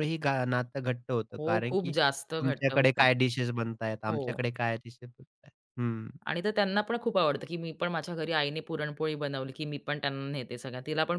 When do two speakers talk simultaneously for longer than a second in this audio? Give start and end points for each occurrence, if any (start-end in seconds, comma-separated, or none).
1.4-3.1